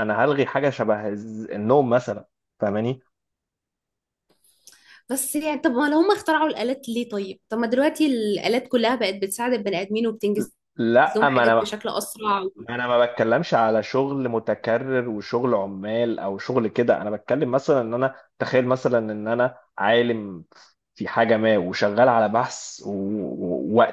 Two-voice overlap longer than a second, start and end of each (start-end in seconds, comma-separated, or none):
none